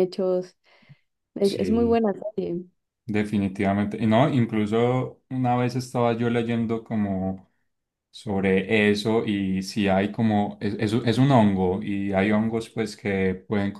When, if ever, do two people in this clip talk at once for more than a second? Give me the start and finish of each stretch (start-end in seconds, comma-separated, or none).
none